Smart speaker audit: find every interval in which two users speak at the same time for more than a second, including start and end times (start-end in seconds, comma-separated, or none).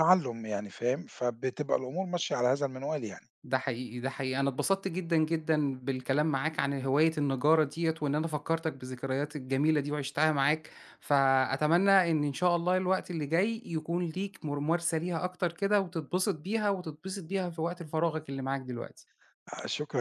none